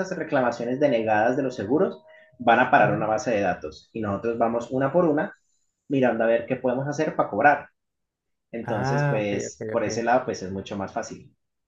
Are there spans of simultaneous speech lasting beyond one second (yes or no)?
yes